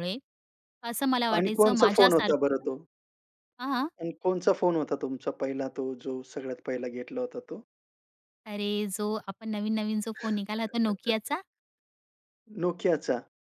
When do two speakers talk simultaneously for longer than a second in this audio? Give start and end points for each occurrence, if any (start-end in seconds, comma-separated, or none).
1.4-2.7